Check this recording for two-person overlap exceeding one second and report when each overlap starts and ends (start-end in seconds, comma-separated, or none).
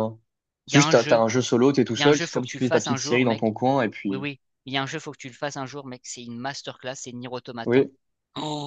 1.9-3.4